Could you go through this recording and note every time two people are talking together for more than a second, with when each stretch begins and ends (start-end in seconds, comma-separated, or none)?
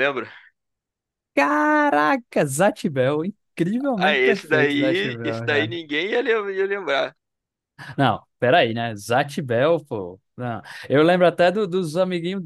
4.0-5.8